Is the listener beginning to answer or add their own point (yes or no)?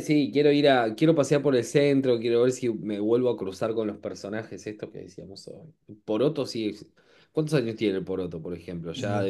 no